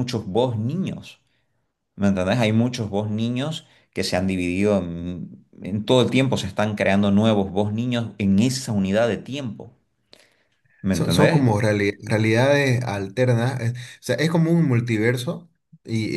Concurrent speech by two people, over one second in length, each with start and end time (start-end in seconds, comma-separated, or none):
none